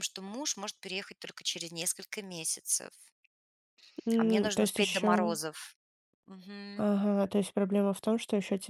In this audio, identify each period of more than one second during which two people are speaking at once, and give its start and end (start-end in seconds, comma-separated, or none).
4.2-5.4